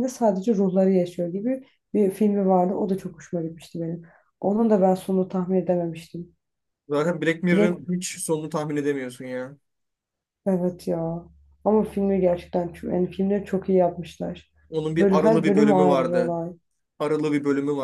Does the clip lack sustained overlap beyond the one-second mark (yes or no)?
no